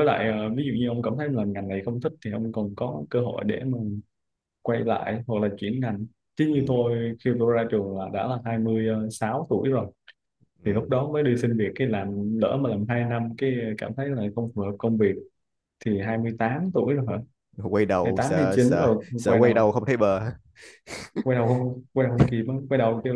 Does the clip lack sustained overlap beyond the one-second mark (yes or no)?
no